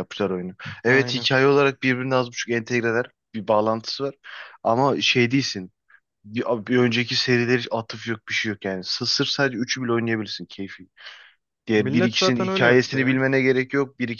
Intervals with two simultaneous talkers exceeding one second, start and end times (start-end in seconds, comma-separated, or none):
11.8-13.2